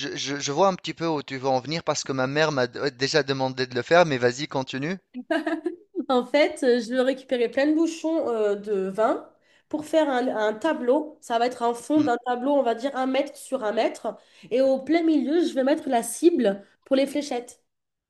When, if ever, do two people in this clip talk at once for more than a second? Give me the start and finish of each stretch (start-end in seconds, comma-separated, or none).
none